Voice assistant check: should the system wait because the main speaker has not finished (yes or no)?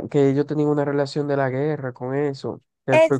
no